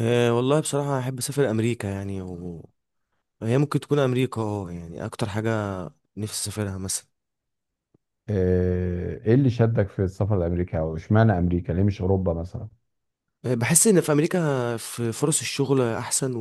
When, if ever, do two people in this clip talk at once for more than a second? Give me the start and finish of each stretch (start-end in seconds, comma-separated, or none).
none